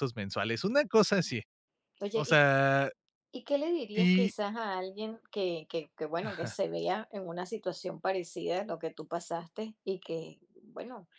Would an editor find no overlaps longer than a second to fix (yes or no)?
yes